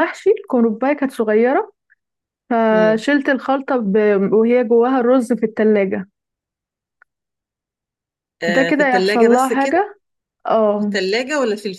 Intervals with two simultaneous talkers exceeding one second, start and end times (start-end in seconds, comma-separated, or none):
8.5-9.8